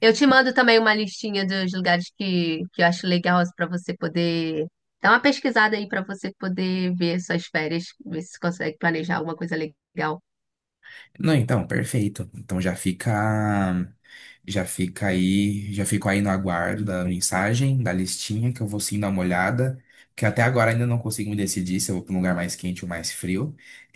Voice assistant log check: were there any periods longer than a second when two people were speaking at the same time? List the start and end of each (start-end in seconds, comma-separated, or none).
none